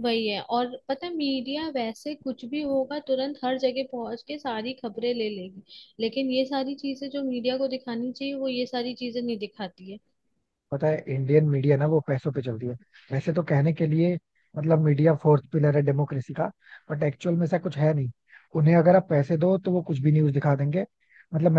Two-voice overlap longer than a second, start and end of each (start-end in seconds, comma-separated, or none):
none